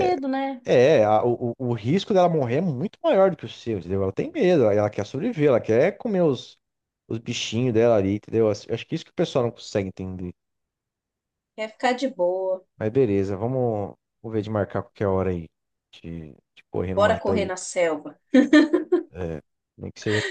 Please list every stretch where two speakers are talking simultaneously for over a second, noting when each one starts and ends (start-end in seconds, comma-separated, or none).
none